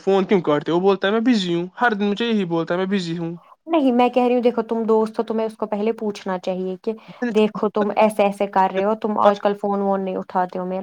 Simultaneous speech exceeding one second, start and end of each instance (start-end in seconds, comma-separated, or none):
none